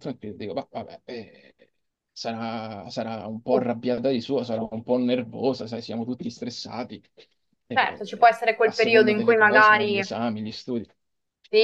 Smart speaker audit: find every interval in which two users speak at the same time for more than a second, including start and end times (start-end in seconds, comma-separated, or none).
7.7-10.0